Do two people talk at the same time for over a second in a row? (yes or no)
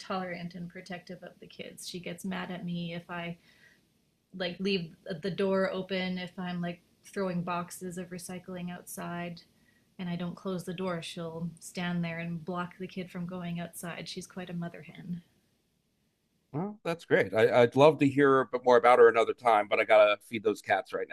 no